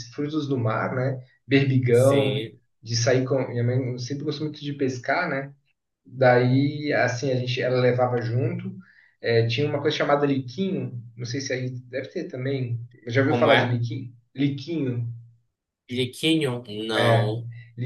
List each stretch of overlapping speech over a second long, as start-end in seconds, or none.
none